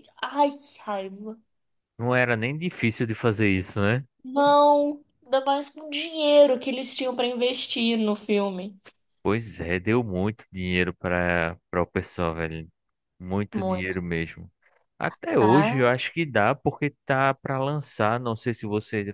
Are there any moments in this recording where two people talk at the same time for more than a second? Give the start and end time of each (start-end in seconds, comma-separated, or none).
none